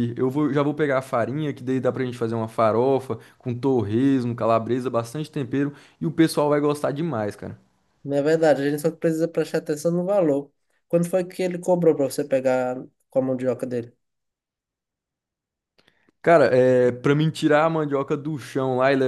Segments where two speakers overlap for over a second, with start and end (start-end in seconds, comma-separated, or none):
none